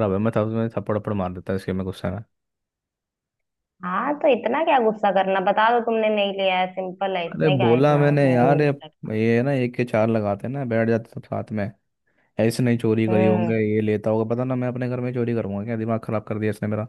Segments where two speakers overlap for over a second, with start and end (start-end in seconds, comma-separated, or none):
7.3-8.7